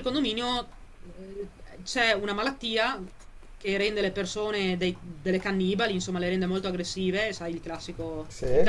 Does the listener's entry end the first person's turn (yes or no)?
no